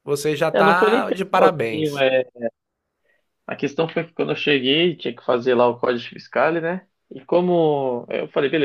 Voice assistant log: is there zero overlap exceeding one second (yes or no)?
no